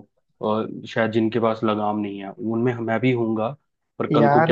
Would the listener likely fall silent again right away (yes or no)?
no